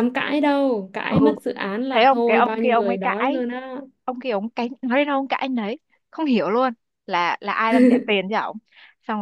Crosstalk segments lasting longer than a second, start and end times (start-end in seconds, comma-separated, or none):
1.9-3.4